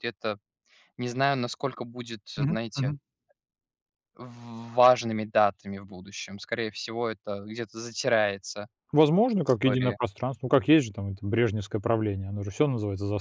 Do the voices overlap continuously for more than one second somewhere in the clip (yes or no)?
no